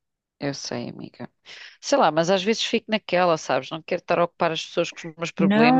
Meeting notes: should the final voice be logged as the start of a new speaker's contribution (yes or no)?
yes